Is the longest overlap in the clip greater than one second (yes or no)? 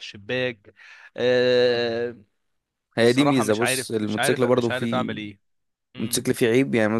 yes